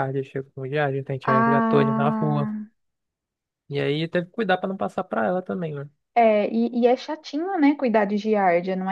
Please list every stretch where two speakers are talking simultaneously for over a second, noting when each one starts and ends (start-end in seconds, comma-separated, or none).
1.2-2.5